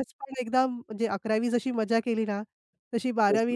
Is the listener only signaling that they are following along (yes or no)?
yes